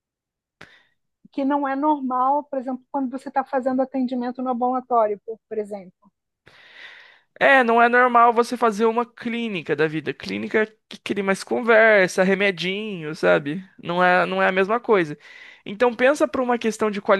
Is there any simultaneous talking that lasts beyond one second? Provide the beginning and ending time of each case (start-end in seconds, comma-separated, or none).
none